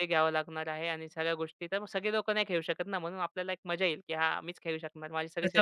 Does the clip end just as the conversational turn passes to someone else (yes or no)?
yes